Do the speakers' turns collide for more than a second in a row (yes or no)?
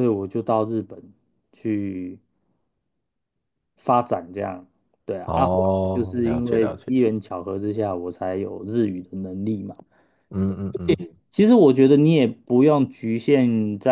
yes